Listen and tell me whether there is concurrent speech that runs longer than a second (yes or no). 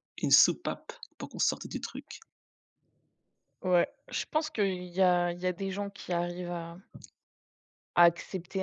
no